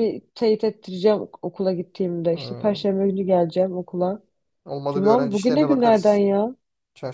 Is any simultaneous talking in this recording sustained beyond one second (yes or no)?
yes